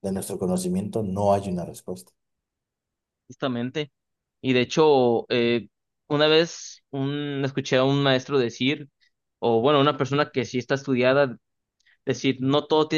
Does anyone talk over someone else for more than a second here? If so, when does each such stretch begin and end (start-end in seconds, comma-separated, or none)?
none